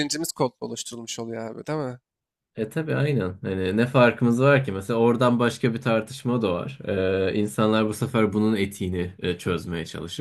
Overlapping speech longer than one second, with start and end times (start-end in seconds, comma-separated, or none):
none